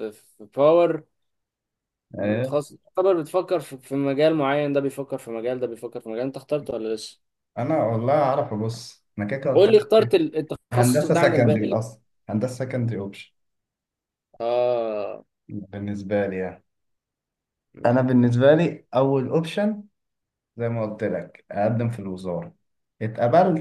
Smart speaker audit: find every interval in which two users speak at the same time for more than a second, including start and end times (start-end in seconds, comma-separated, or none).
10.7-12.0